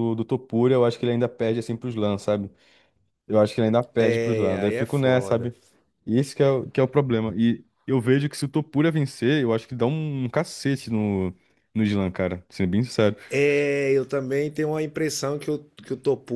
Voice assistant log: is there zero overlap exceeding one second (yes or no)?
no